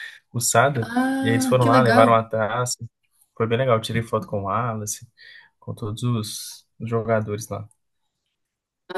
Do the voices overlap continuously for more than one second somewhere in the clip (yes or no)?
yes